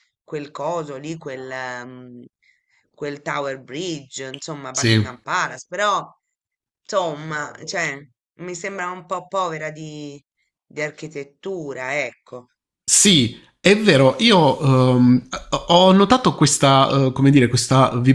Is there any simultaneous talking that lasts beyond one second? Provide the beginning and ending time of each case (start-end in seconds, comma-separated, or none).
none